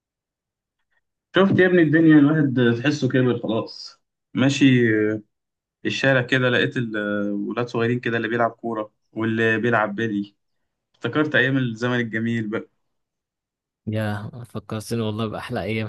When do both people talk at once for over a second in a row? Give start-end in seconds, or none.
none